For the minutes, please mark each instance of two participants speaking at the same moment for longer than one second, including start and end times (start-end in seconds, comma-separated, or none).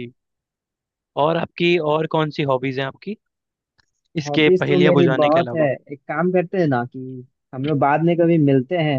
4.3-5.7